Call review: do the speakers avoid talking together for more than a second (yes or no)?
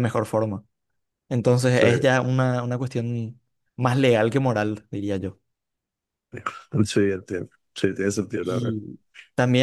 yes